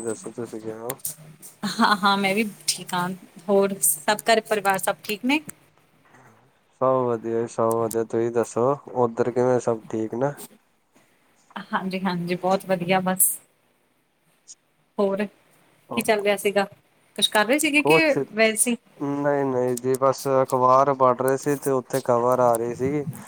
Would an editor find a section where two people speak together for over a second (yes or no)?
no